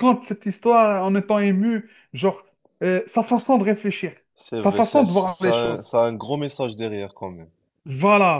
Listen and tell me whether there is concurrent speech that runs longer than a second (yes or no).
yes